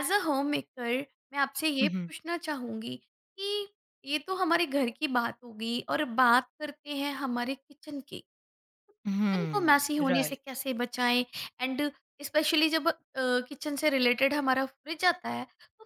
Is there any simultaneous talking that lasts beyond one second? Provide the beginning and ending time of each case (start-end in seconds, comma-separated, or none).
9.1-10.4